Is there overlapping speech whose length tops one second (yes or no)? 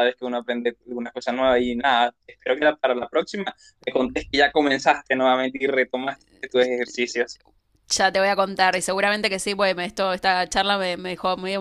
no